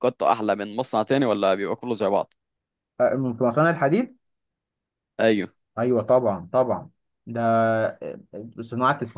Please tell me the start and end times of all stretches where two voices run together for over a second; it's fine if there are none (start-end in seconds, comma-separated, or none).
none